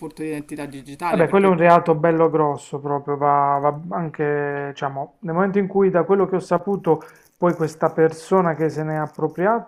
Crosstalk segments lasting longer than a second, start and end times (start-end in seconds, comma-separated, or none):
none